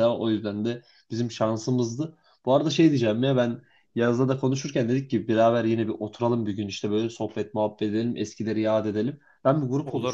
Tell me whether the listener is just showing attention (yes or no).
yes